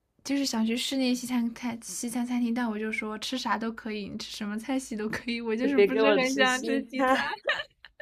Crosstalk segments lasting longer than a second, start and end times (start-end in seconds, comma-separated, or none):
5.6-7.2